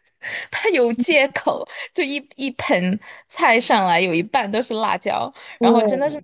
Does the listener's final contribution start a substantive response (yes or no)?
no